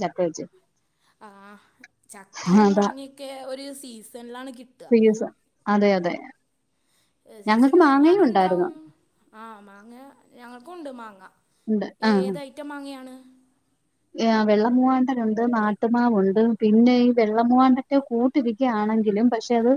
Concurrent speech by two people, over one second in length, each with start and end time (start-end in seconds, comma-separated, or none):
7.5-8.7